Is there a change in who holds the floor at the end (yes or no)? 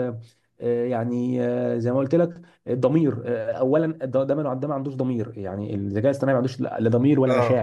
yes